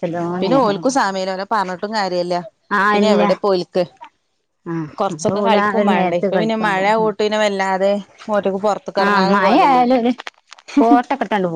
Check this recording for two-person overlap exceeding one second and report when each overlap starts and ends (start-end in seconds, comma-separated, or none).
5.0-7.1